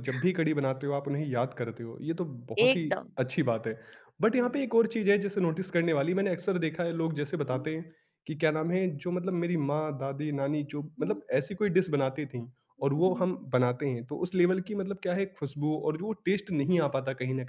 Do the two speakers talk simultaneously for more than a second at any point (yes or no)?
no